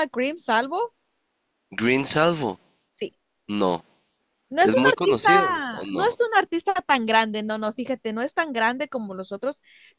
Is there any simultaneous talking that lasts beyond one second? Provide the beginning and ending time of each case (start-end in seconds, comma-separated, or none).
4.6-6.2